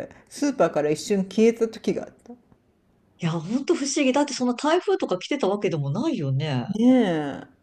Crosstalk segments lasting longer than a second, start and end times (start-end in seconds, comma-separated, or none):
none